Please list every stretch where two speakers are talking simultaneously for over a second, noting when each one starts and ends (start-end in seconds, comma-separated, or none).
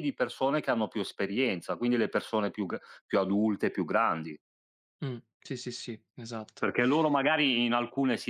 none